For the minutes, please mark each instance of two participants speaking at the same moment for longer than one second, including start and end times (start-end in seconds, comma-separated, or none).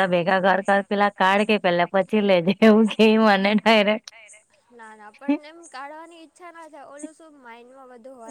none